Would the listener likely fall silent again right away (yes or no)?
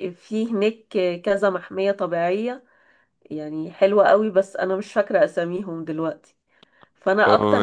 no